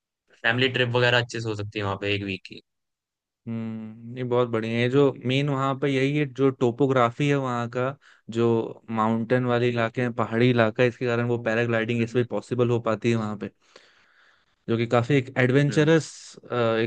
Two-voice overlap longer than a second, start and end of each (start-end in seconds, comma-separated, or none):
none